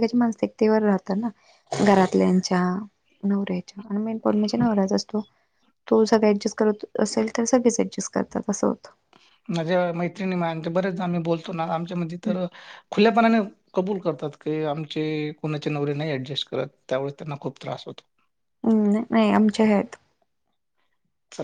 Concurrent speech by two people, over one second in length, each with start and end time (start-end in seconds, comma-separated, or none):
none